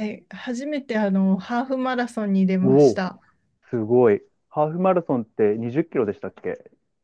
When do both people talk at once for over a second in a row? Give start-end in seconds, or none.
none